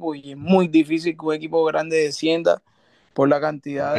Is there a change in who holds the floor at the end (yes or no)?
yes